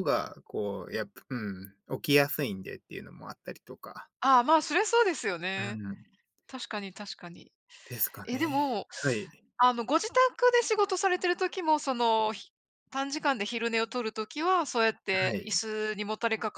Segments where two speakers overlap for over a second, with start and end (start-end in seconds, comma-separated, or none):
none